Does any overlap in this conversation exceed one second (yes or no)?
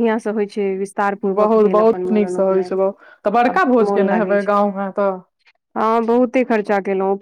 yes